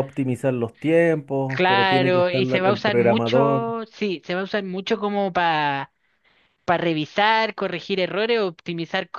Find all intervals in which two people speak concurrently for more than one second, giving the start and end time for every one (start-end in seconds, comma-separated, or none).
1.4-3.6